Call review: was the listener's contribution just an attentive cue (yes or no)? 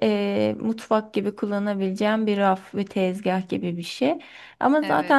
yes